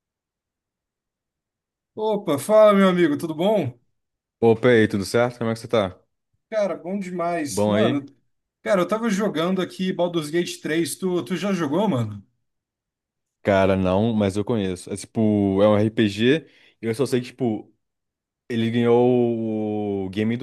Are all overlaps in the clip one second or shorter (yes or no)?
yes